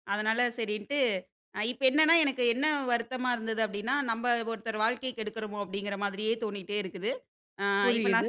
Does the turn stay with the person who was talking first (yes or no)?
no